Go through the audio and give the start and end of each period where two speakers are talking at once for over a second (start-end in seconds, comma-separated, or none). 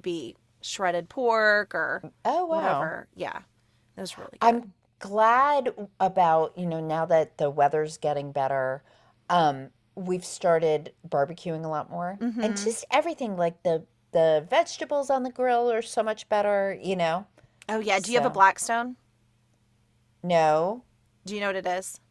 none